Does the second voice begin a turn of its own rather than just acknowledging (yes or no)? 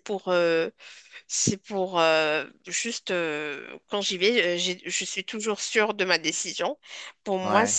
no